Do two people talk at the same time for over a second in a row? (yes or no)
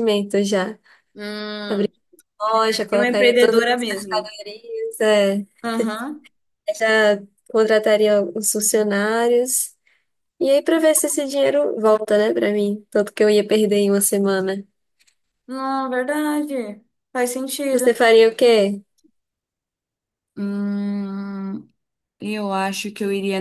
yes